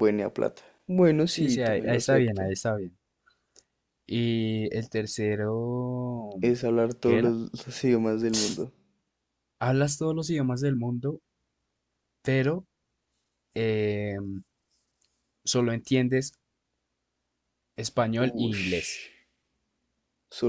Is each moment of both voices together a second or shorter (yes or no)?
no